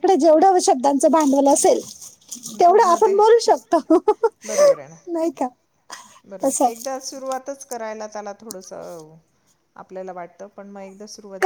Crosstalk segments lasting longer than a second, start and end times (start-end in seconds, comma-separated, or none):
none